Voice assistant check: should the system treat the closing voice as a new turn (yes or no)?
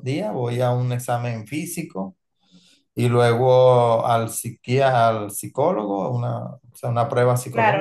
yes